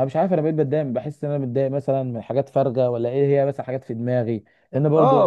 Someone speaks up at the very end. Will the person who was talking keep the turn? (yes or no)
no